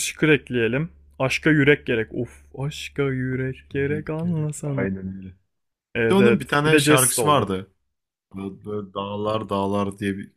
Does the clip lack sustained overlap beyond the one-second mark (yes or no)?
no